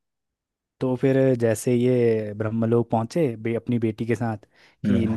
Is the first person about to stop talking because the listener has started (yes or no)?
no